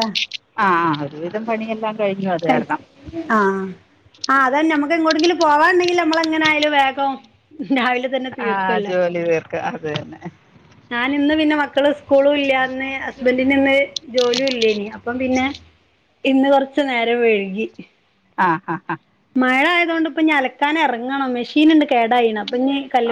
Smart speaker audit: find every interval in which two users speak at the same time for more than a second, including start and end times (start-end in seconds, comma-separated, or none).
none